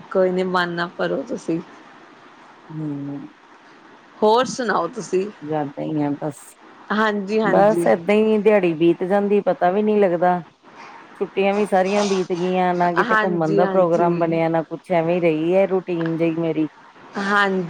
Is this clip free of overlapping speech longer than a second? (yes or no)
no